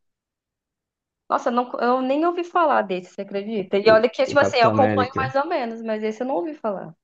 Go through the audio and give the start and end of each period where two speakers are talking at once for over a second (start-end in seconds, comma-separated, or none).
3.8-5.3